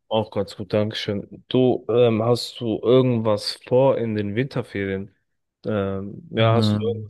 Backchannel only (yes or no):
yes